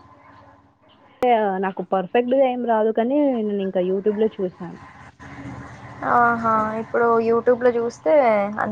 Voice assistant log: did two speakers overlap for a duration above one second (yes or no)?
no